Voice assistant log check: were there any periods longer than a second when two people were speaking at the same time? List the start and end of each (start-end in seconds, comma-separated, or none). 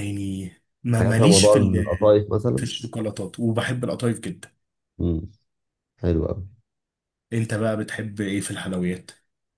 1.0-2.7